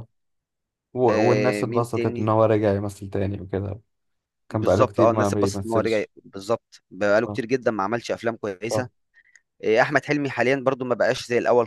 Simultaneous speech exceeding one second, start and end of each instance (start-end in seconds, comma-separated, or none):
1.1-2.3, 4.5-6.1